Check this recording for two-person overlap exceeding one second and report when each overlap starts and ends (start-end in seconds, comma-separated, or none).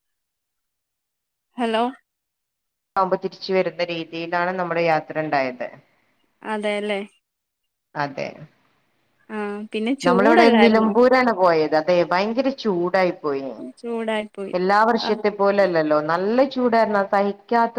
none